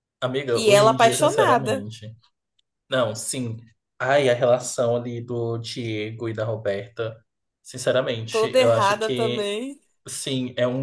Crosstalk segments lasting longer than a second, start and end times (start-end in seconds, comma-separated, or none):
0.5-1.9, 8.3-9.5